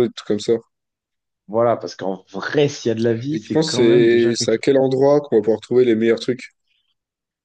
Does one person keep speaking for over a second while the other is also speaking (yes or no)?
yes